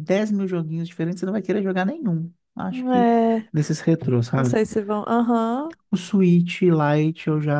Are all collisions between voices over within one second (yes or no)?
yes